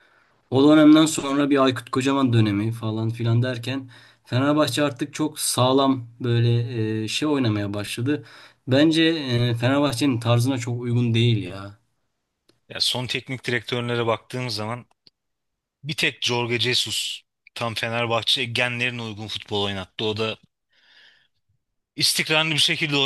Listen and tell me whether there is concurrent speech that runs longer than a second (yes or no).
no